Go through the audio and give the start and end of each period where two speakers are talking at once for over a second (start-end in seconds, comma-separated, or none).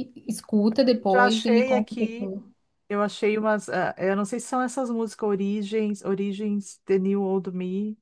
1.1-2.3